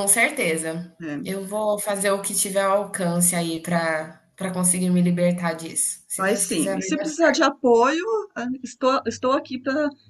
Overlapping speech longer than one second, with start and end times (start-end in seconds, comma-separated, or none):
6.2-7.5